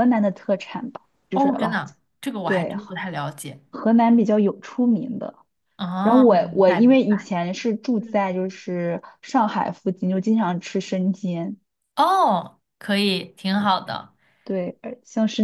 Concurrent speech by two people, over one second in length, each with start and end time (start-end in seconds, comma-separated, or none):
6.0-7.3